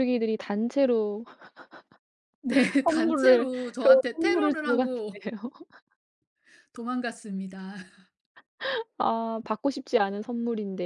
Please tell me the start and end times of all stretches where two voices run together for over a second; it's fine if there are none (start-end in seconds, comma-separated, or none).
2.8-5.2